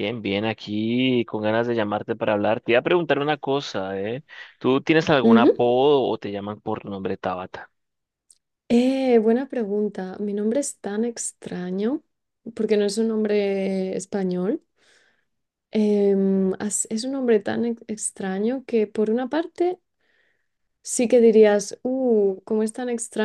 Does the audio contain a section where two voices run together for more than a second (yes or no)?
no